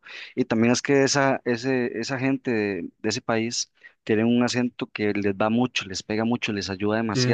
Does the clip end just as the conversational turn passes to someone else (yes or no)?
no